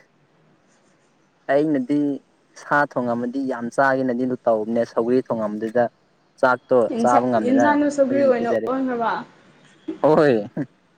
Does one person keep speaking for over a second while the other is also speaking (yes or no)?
yes